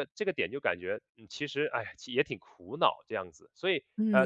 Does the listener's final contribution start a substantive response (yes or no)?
yes